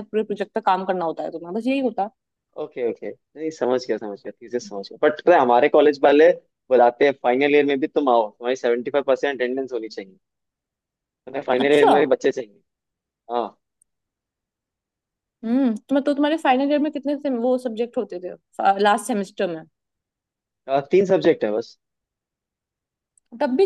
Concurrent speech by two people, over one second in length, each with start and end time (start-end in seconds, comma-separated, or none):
none